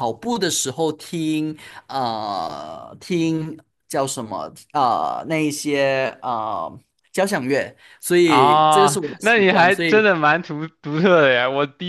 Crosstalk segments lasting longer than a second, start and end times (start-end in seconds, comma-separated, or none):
8.2-10.1